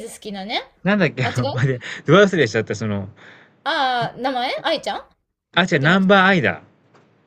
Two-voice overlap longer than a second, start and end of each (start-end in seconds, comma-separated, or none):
none